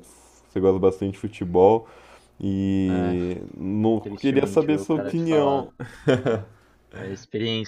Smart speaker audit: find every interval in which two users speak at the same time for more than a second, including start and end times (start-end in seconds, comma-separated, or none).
4.0-5.7